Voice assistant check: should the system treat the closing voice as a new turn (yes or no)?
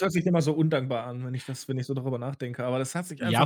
yes